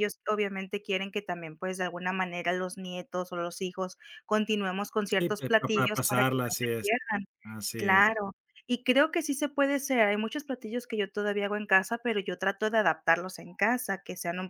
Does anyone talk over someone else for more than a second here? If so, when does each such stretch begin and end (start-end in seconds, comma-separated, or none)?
5.1-6.9